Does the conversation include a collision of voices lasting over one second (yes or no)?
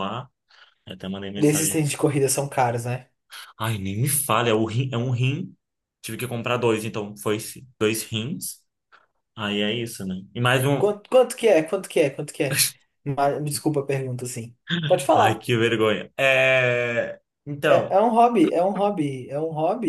no